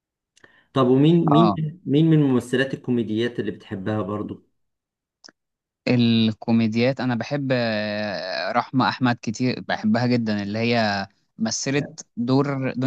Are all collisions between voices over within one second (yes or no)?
yes